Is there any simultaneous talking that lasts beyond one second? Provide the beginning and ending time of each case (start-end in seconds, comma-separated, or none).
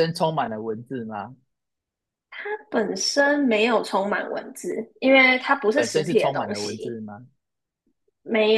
5.7-7.0